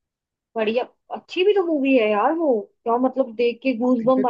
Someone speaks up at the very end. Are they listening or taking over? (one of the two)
taking over